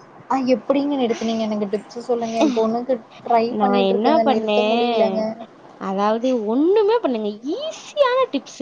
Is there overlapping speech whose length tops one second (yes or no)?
yes